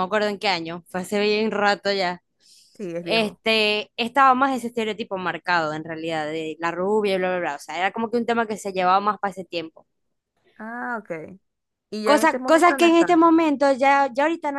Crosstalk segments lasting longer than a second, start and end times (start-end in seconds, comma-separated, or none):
12.0-13.3